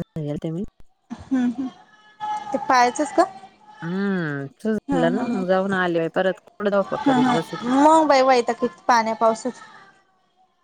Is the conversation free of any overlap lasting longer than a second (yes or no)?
yes